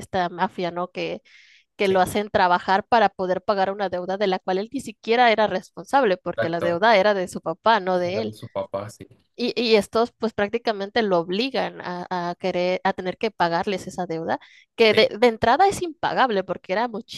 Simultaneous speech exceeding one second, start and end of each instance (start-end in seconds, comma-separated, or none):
none